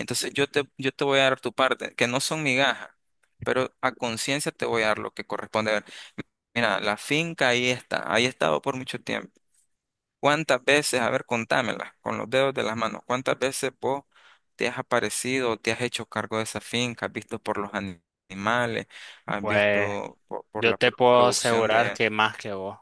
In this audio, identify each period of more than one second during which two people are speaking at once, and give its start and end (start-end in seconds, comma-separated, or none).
20.6-22.0